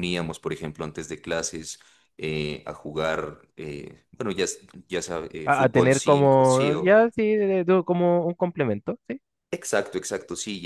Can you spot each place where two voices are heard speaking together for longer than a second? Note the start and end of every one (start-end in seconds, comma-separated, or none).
5.4-7.0